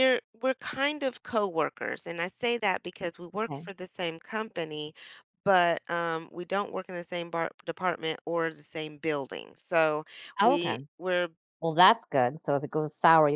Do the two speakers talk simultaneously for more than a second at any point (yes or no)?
no